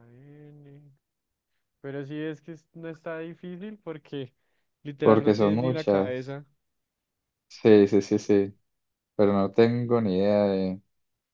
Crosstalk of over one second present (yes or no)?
yes